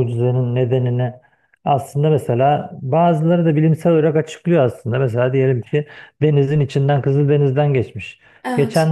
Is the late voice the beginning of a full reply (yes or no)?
no